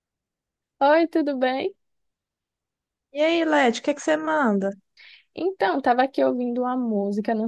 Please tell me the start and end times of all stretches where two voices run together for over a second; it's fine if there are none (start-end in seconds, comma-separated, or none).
none